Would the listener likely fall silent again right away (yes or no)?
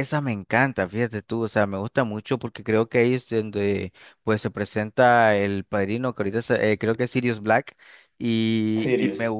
yes